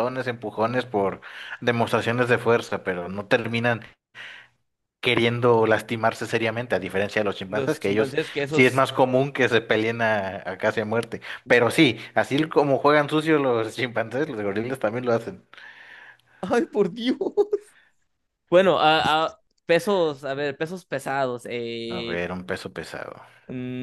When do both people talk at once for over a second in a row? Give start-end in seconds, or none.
7.5-8.8